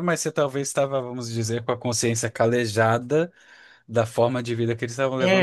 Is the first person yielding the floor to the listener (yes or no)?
yes